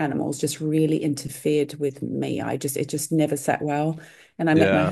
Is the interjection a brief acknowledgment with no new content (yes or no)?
yes